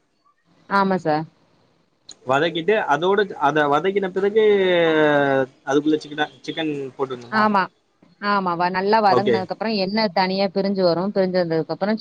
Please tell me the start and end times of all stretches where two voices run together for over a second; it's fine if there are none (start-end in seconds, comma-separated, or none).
none